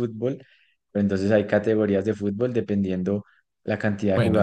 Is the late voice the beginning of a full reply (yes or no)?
no